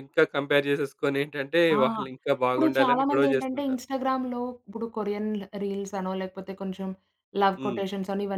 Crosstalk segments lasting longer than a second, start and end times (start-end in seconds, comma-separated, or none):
2.5-3.8